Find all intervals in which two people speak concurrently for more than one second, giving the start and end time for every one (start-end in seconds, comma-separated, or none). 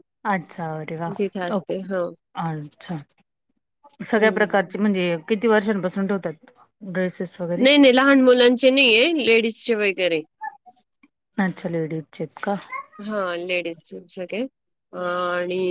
none